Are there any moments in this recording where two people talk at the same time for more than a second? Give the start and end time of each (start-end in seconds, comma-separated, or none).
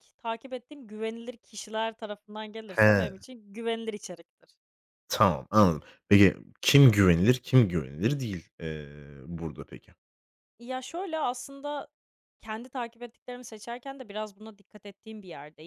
none